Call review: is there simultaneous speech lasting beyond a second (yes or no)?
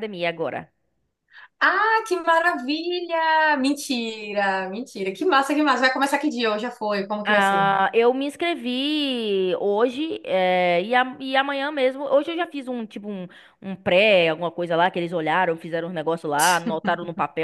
no